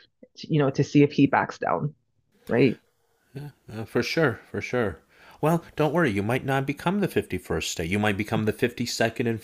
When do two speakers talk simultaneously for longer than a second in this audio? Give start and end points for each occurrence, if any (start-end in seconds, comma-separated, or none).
none